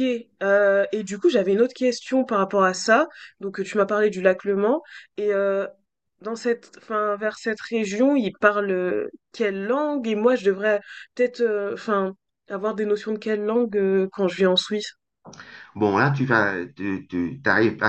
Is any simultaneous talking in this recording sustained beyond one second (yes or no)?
no